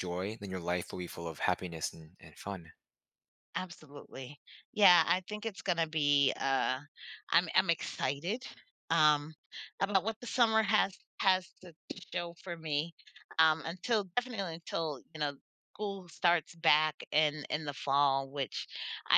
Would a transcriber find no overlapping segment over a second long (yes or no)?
yes